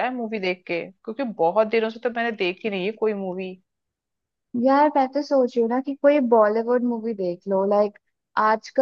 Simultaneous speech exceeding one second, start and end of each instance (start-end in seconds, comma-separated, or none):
none